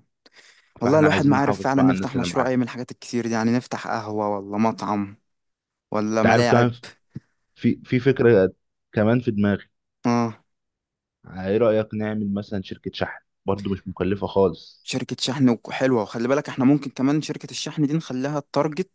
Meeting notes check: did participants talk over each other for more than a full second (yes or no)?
yes